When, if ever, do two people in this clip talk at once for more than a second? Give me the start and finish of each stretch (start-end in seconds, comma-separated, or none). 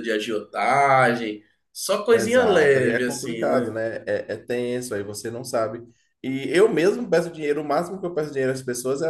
2.1-3.8